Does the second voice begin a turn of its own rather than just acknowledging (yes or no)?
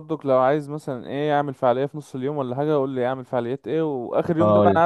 no